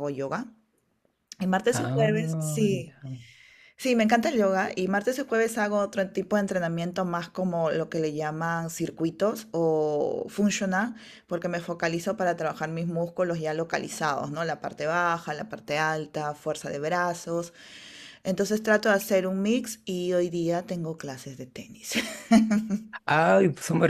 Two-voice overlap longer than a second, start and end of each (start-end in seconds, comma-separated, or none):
1.7-3.0